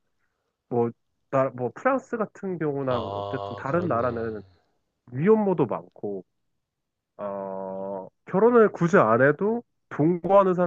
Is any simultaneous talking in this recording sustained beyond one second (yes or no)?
yes